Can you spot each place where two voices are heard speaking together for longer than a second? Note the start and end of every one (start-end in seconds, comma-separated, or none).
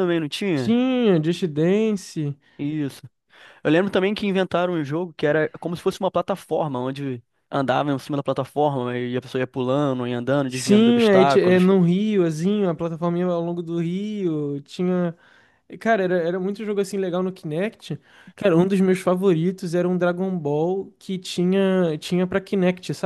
10.5-11.7